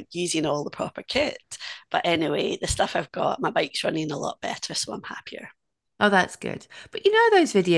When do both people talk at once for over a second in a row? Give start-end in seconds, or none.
none